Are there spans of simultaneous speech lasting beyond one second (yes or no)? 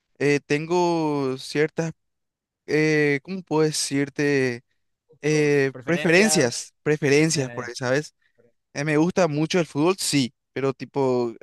yes